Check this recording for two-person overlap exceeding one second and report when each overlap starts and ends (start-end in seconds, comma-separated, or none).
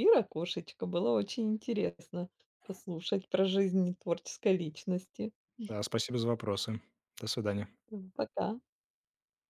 none